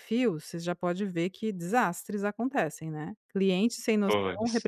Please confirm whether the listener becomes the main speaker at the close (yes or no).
no